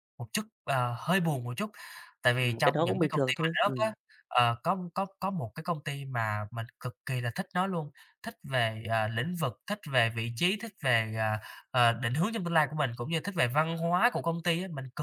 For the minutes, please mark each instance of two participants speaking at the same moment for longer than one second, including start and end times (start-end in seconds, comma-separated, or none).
2.4-3.9